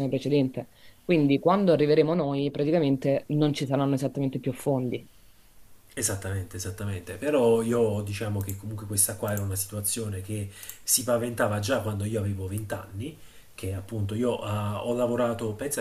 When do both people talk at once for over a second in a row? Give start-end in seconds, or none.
none